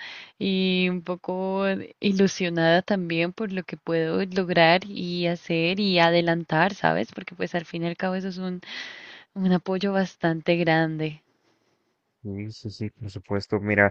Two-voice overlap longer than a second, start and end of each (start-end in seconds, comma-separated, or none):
none